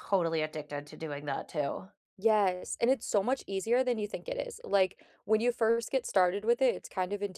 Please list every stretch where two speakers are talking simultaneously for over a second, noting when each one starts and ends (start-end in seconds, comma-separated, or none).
none